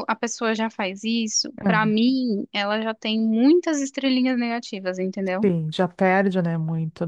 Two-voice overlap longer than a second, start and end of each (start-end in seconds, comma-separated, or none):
none